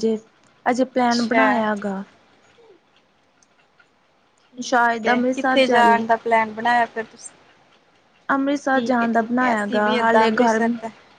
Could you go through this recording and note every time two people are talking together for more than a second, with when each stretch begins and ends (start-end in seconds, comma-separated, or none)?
4.6-6.0, 8.7-10.6